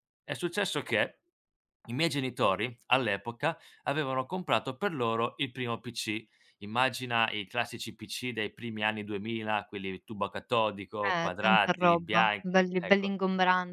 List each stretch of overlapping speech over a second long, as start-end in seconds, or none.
11.1-13.1